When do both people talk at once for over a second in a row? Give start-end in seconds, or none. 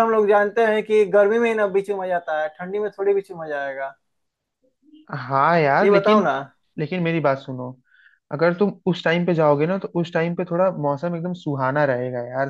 none